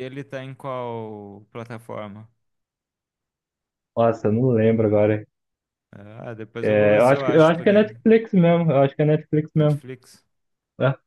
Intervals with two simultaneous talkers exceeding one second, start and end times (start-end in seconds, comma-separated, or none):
6.6-7.9